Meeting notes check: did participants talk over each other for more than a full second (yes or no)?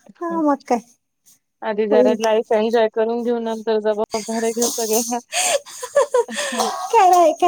no